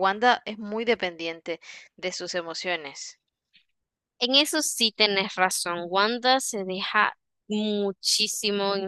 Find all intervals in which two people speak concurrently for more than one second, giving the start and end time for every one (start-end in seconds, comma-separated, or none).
none